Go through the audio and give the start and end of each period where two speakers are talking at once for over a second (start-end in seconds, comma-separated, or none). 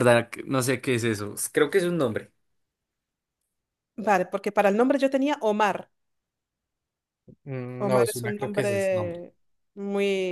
7.8-9.2